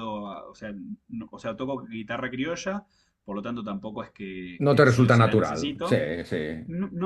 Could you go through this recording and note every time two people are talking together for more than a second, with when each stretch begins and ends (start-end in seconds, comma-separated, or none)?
4.7-6.0